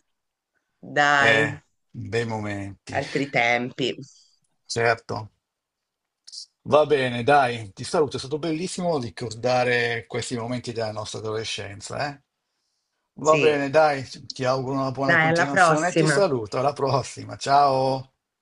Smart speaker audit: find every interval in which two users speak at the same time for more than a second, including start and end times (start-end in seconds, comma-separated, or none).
15.0-16.2